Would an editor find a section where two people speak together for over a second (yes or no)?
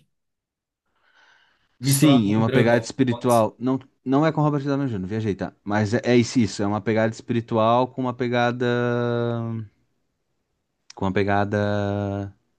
yes